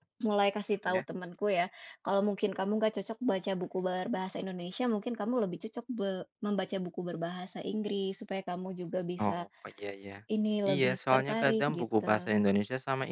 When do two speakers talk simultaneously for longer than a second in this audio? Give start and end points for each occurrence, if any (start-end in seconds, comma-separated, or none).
10.7-12.3